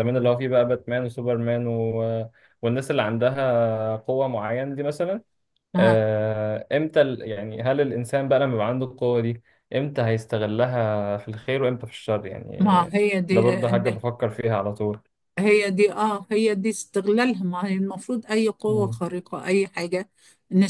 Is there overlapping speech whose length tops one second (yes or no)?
no